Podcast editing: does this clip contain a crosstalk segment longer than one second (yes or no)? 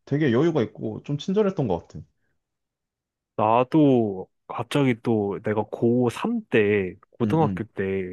no